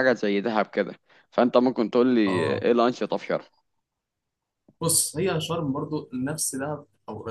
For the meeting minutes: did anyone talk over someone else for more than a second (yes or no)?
no